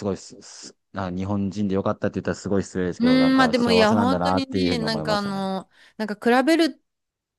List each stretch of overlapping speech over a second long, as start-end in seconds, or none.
3.0-5.5